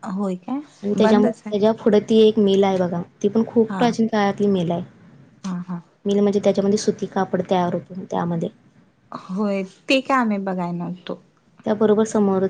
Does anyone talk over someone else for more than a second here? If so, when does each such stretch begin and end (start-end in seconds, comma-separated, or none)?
none